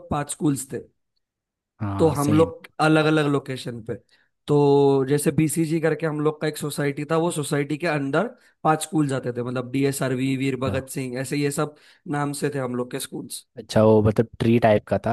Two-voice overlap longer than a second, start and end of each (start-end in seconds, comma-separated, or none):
none